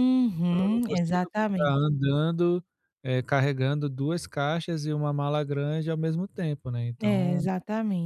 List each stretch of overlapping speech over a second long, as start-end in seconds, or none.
0.5-1.9